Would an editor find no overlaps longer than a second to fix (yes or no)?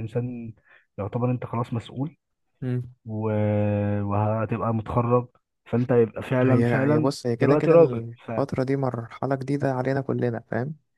no